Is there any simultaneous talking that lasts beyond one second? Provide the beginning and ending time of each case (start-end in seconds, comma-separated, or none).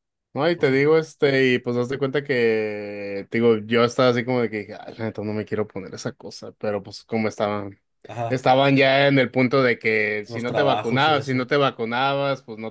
10.3-11.5